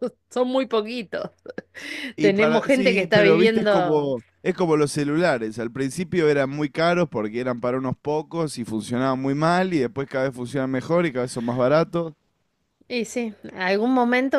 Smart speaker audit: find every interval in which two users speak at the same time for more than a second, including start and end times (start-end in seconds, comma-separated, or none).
2.2-4.1